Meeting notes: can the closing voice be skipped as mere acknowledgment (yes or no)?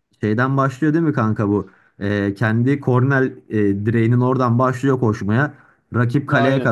yes